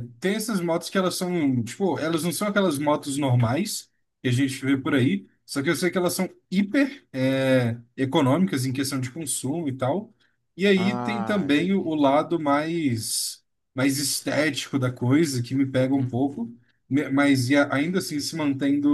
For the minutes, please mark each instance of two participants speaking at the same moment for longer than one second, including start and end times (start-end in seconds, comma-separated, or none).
10.8-12.0